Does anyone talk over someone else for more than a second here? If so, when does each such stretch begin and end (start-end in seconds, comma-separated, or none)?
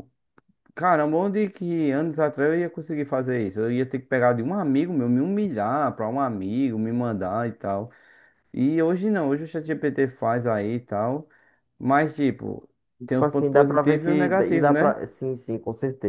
13.1-15.0